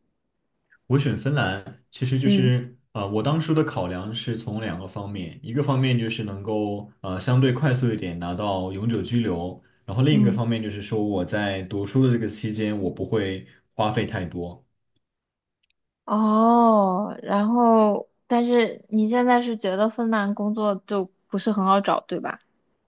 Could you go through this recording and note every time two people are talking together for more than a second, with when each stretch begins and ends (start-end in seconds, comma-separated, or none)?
none